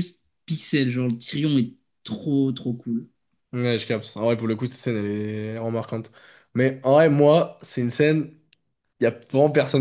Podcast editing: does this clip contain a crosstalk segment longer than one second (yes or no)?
no